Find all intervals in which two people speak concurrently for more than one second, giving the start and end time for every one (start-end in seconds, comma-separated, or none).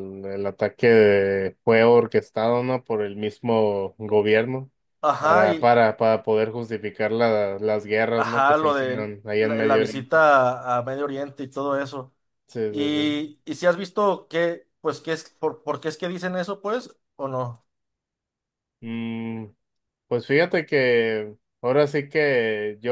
8.2-10.2